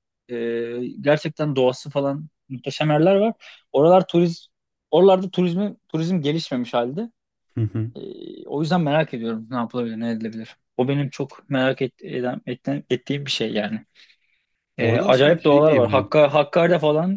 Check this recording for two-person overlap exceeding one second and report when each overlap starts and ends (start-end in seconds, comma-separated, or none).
14.8-16.2